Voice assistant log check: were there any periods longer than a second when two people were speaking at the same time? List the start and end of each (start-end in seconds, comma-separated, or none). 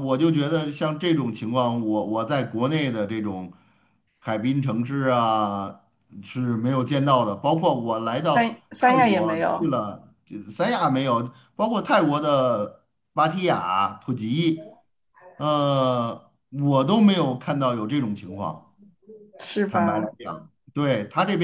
8.2-9.7